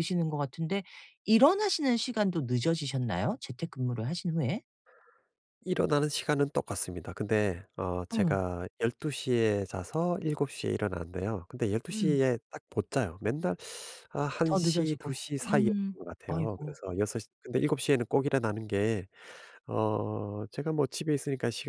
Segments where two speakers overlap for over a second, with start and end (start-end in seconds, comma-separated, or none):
14.4-16.8